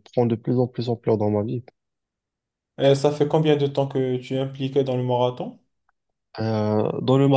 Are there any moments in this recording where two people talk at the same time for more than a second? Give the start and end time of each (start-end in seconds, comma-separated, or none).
none